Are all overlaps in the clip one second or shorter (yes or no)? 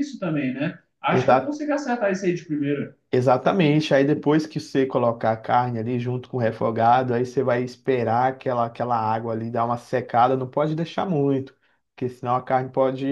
yes